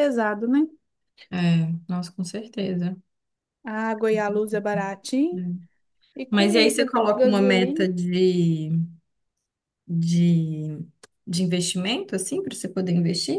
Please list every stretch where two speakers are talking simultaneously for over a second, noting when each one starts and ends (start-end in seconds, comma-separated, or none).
6.3-7.9